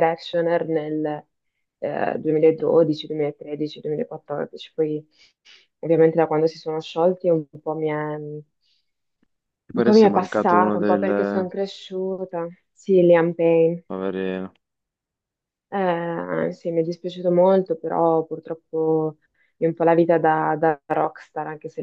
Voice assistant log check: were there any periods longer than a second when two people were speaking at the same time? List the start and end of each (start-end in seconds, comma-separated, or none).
9.8-11.5